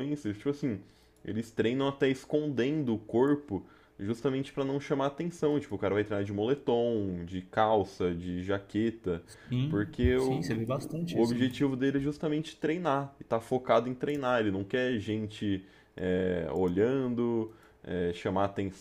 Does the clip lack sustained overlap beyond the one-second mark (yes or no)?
no